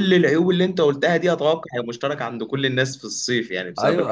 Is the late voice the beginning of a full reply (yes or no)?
yes